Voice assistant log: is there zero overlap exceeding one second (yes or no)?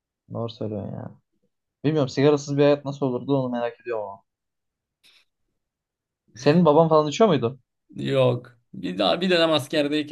yes